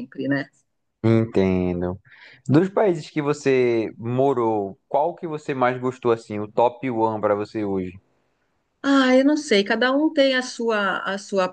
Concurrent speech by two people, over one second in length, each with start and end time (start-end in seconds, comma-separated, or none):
none